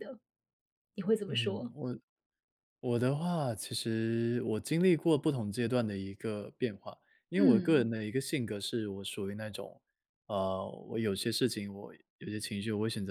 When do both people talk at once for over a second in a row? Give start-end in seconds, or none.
none